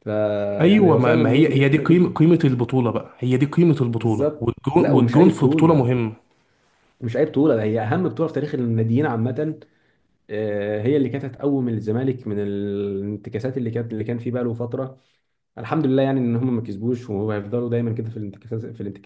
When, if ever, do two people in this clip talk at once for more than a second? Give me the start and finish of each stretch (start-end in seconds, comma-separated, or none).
0.6-2.1, 4.0-5.9